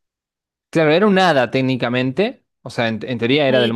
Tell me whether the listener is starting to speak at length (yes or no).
yes